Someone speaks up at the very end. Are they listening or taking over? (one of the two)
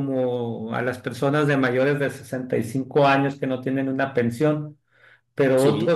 listening